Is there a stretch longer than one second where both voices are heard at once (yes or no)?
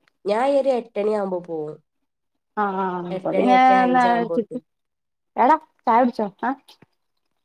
yes